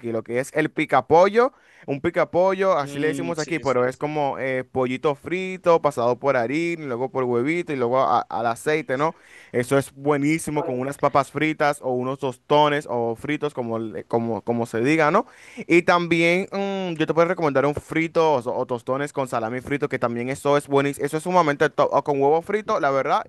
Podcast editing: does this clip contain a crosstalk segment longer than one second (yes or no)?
yes